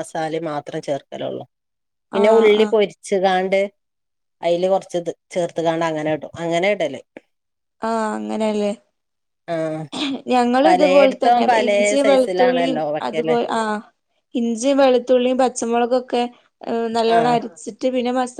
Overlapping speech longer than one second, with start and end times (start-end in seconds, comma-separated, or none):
10.7-13.4